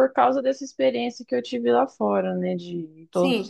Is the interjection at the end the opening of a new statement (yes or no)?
yes